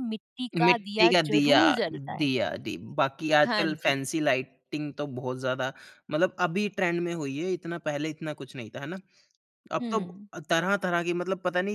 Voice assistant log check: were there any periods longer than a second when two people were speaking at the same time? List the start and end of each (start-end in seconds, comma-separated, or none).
0.6-2.2